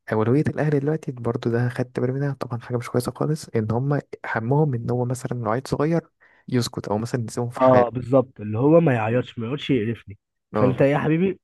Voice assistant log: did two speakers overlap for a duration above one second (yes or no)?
no